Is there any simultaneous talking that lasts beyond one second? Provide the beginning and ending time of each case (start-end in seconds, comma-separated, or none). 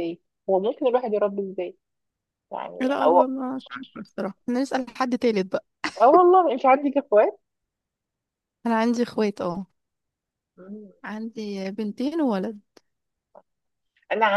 none